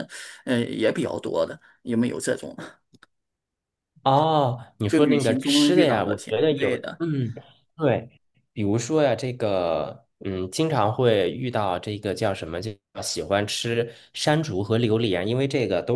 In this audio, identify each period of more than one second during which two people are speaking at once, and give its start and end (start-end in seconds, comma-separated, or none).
4.9-7.0